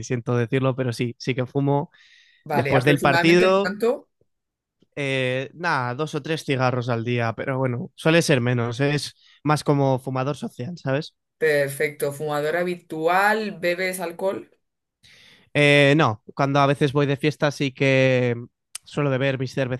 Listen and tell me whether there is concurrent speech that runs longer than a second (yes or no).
yes